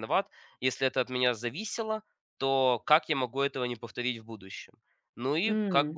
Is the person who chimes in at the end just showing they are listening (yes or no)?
yes